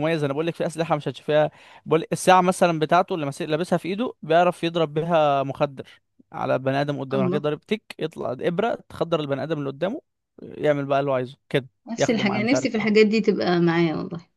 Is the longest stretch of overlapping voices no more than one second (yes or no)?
no